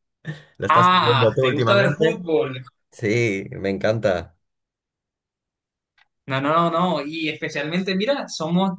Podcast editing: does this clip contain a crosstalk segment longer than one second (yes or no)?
yes